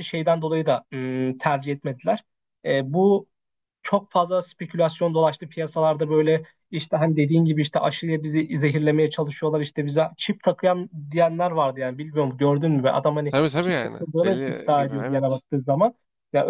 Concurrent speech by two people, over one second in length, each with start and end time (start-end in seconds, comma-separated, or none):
13.3-15.4